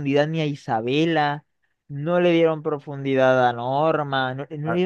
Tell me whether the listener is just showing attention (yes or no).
no